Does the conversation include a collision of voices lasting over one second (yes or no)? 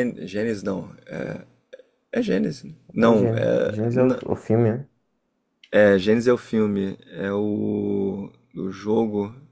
yes